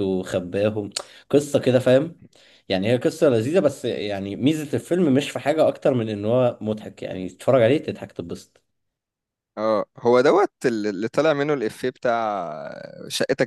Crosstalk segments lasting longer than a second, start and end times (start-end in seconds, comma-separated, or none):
none